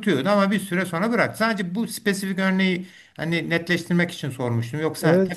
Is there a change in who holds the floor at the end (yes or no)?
yes